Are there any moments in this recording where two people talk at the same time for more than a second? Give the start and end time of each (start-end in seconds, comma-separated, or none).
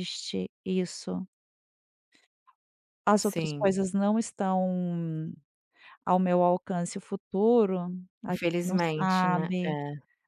8.3-9.8